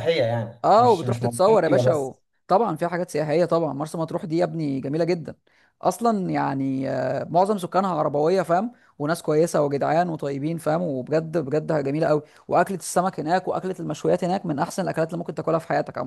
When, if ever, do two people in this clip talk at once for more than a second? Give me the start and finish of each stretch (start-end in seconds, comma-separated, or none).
0.6-2.1